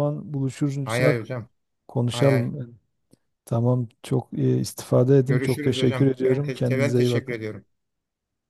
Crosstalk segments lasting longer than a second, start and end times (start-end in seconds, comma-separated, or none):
5.3-7.5